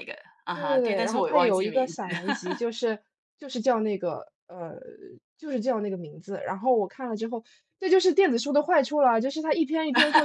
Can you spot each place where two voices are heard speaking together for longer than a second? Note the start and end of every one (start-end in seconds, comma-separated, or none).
0.5-2.0